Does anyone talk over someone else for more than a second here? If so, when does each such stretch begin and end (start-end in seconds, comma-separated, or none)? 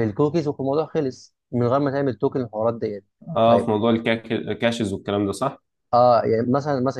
none